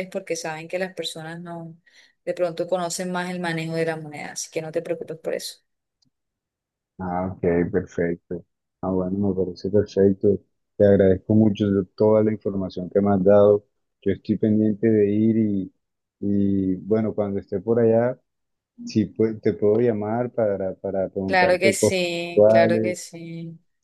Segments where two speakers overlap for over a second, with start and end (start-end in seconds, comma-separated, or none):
21.3-23.0